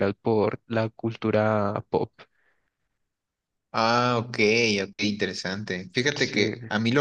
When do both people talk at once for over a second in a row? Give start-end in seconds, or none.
none